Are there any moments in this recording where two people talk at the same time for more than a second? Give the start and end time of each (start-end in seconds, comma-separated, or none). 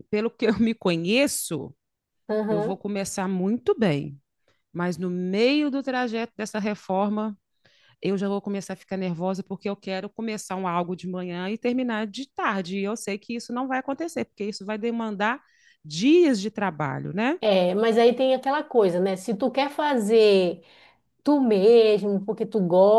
none